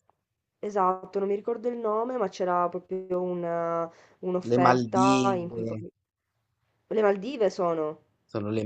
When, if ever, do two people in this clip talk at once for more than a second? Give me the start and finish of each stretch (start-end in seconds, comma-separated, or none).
4.5-5.8